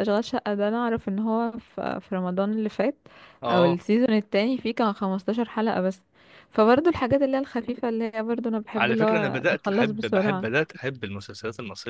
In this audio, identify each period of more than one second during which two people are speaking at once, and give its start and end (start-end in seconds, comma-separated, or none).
8.8-10.5